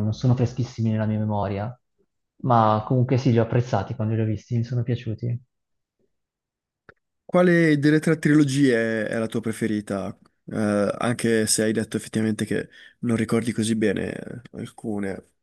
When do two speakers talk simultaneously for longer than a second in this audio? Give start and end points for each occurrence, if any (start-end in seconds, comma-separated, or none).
none